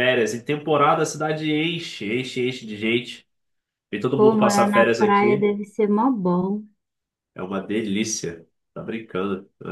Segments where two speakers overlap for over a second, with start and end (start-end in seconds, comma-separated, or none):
4.1-5.5